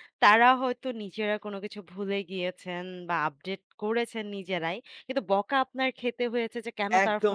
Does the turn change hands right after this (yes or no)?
yes